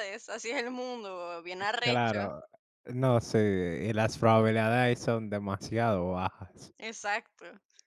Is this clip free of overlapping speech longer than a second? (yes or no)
yes